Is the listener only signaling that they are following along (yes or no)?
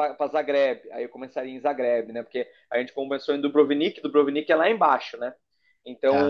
yes